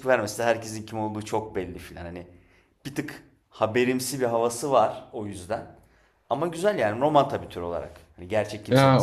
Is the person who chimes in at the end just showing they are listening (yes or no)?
no